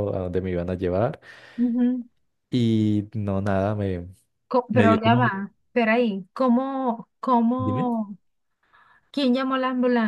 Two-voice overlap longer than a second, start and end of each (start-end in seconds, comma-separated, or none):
none